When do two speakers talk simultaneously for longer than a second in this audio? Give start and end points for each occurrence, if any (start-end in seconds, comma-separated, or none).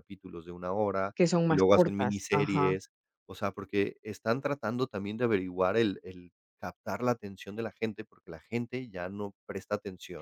1.2-2.8